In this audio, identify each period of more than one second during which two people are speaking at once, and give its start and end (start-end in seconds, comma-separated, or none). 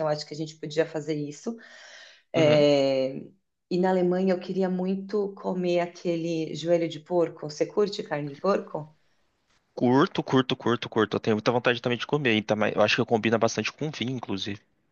none